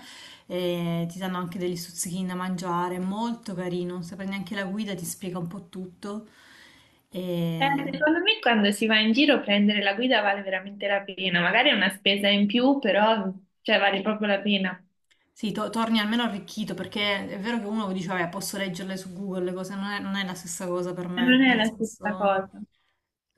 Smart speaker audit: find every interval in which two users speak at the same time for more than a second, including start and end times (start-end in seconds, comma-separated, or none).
21.2-22.5